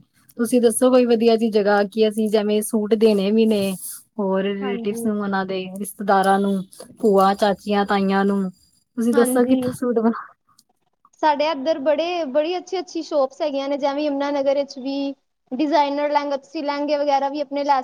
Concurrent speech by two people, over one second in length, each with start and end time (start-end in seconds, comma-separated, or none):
none